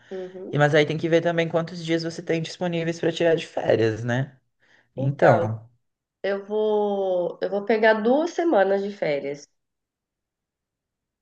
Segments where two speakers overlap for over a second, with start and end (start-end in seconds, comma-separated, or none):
none